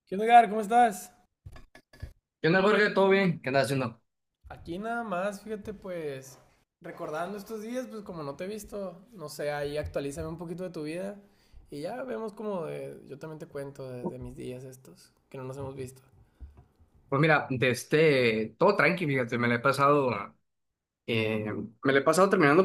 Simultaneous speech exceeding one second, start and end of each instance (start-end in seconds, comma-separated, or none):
none